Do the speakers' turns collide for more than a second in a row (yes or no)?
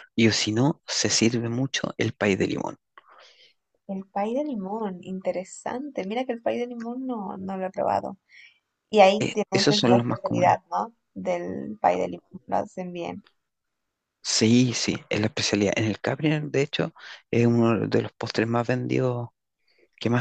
yes